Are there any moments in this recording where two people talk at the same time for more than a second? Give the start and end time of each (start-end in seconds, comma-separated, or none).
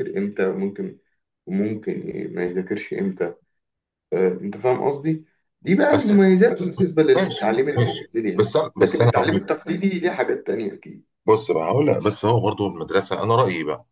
7.2-9.4